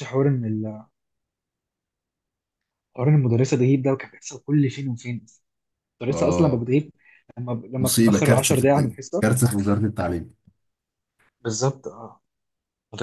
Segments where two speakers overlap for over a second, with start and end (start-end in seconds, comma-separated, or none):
7.8-9.2